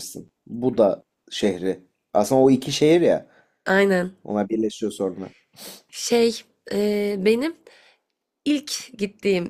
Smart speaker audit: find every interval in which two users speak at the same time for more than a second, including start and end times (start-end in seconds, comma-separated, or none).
none